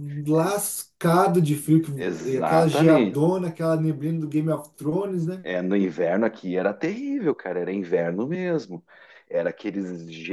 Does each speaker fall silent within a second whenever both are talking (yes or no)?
no